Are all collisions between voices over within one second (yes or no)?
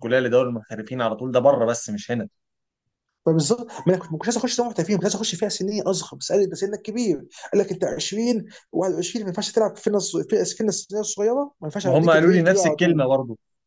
no